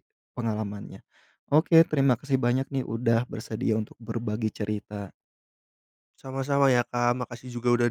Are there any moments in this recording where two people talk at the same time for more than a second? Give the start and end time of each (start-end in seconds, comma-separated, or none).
none